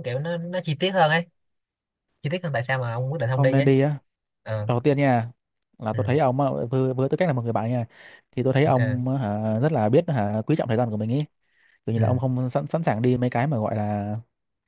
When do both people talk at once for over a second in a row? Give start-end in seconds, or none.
none